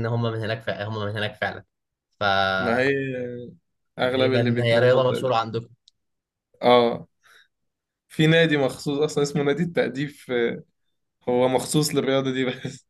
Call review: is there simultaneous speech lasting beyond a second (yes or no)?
yes